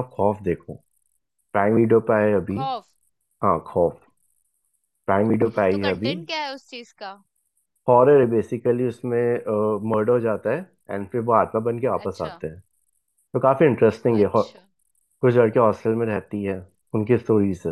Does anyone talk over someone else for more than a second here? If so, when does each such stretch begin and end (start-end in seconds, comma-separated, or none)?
none